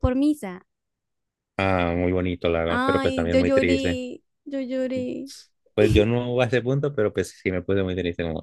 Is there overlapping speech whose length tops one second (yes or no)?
yes